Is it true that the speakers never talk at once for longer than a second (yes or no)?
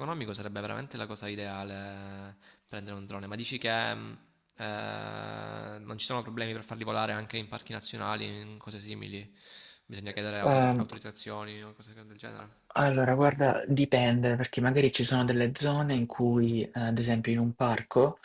yes